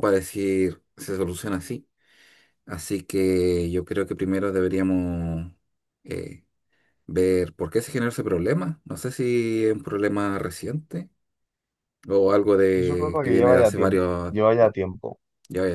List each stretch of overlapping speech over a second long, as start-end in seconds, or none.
12.7-14.3